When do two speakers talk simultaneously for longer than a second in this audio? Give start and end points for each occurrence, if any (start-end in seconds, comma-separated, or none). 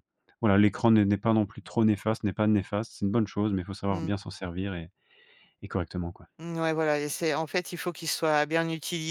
none